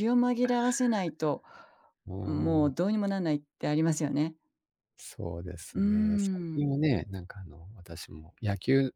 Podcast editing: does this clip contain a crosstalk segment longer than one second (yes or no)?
no